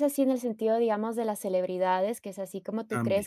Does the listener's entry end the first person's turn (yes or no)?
no